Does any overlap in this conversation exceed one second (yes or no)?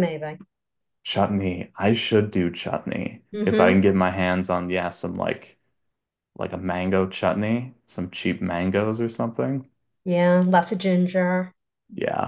no